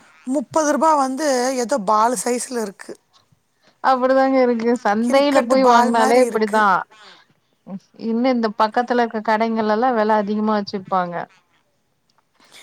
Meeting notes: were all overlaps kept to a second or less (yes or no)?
no